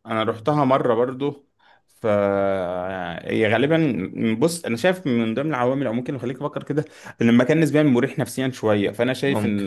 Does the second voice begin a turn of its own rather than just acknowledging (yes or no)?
no